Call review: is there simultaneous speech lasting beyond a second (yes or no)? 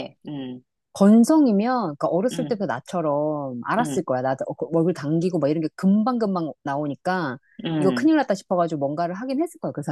no